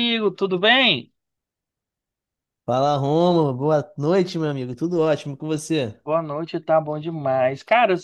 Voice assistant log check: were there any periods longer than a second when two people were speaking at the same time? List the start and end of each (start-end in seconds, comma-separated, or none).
none